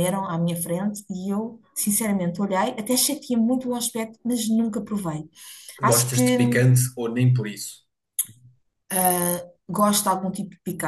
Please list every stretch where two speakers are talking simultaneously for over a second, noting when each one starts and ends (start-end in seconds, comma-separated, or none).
none